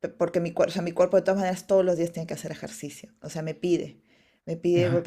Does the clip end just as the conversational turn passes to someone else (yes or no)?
no